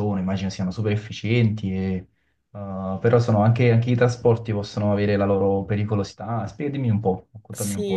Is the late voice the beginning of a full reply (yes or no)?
yes